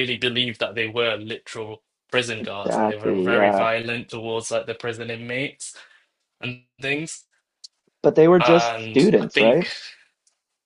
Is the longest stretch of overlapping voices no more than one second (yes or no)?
no